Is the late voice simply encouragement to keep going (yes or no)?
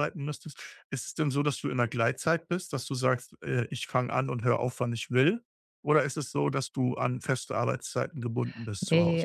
no